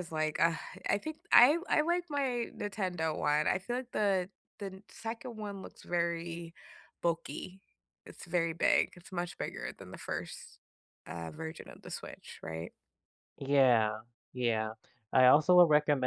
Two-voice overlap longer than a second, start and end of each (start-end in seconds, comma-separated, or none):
none